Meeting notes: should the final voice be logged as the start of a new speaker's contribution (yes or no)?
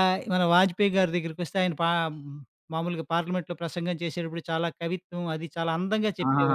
yes